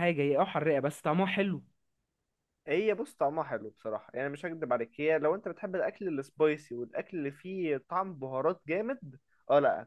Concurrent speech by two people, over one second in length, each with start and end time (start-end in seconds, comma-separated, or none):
none